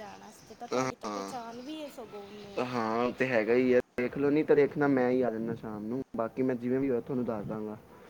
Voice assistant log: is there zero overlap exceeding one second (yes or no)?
yes